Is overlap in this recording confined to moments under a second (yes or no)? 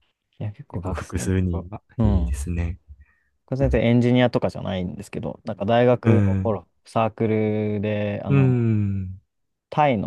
no